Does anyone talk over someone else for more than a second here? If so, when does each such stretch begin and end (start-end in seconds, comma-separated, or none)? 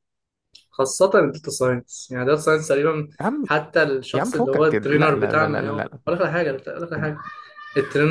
4.1-6.0